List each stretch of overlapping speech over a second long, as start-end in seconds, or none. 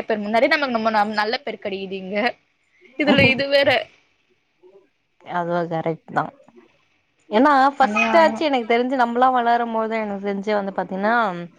none